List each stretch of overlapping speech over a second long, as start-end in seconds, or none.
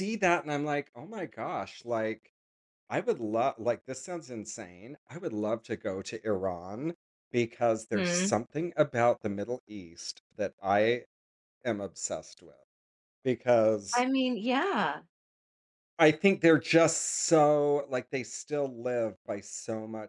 none